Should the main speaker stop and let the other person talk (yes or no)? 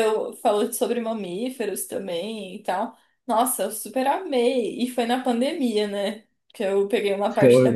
yes